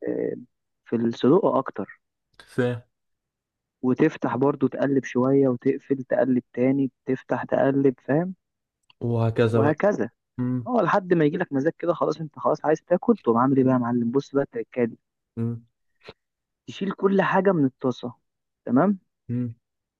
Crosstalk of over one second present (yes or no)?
no